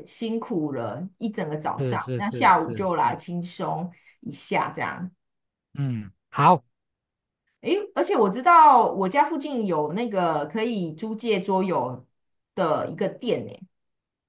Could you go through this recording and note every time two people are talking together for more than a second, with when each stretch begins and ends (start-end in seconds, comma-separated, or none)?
1.8-3.2